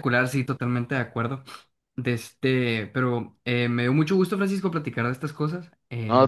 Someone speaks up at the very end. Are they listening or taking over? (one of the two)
listening